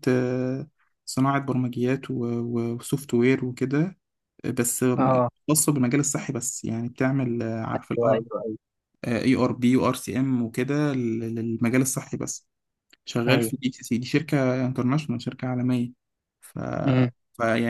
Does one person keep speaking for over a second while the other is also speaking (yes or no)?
no